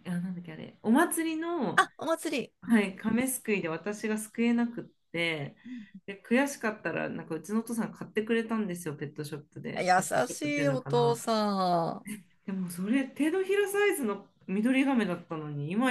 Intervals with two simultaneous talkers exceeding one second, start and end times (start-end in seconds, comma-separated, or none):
9.8-11.3